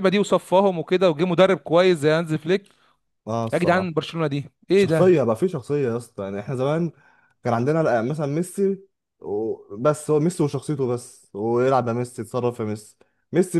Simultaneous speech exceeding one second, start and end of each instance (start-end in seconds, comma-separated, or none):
none